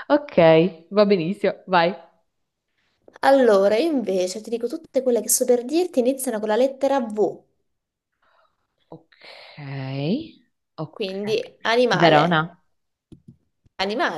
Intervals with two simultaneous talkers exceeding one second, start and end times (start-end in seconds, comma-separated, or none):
10.9-12.4